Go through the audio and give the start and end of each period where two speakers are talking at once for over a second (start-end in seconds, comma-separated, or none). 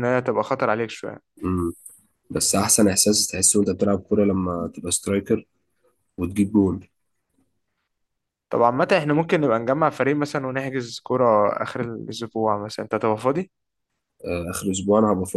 none